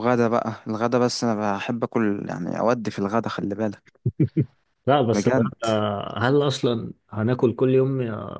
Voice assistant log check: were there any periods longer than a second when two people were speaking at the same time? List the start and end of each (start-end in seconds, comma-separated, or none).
none